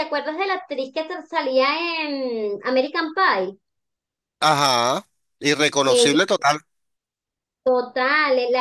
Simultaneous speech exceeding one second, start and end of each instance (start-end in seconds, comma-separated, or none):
none